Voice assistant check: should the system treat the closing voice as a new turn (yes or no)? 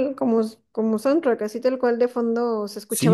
yes